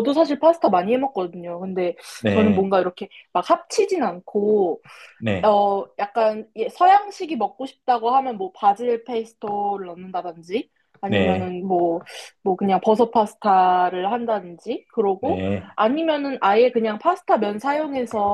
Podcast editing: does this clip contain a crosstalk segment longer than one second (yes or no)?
no